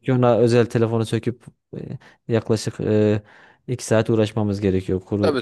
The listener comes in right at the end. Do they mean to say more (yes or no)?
yes